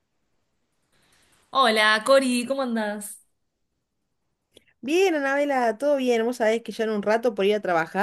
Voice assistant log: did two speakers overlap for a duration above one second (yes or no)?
no